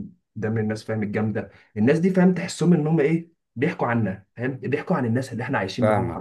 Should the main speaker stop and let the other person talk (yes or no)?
yes